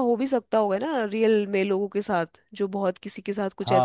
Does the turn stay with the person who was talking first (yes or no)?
no